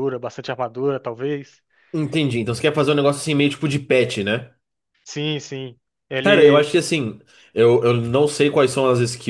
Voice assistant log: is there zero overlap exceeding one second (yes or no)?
yes